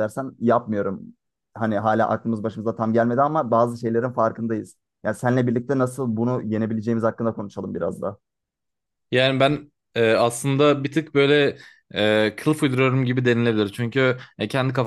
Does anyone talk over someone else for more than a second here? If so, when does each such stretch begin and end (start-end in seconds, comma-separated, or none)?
none